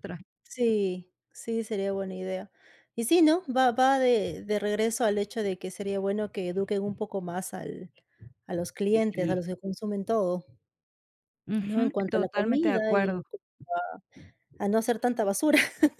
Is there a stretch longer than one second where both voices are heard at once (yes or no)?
yes